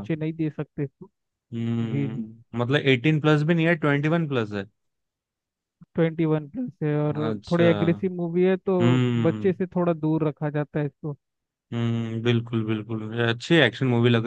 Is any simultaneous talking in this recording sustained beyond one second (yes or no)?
no